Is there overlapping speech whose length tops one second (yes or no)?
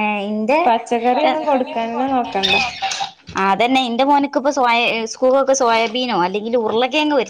yes